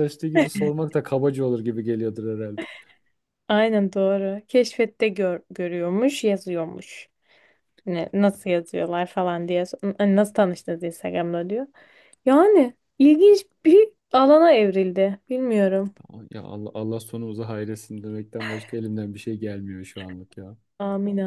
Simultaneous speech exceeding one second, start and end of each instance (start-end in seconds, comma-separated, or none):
none